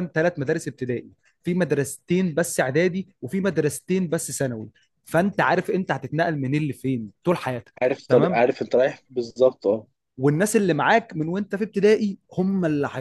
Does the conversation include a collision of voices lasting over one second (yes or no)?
no